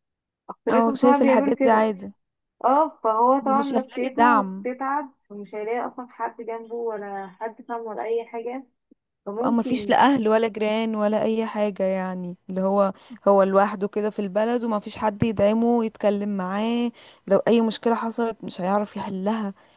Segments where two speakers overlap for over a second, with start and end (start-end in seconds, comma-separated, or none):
0.7-1.9, 3.4-4.7